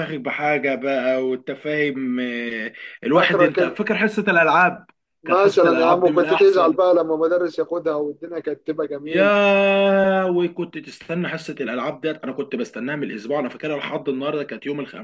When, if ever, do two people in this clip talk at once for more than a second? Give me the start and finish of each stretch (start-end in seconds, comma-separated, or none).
5.2-6.8